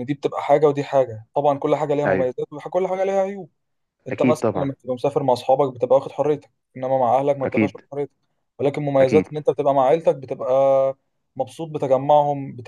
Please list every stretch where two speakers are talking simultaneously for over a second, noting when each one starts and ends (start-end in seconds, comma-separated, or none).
none